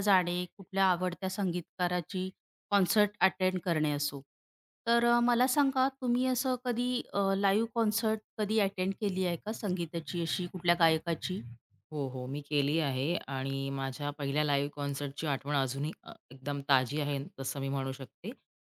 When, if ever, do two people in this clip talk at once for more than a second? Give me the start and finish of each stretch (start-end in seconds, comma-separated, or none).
none